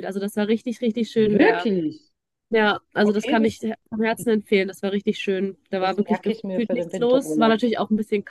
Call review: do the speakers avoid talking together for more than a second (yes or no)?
no